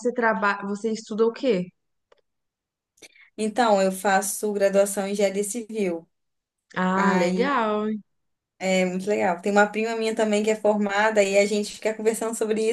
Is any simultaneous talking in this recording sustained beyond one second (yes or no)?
no